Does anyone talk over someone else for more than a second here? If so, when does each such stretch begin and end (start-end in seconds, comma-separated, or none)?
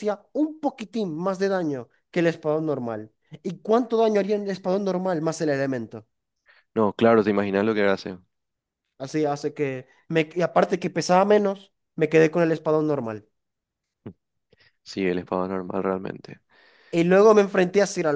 none